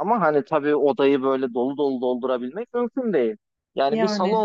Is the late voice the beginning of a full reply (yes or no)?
no